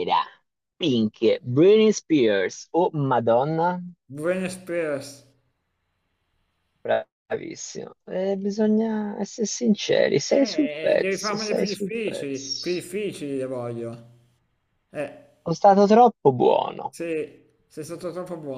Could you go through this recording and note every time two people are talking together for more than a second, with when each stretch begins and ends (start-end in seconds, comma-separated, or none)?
10.3-12.9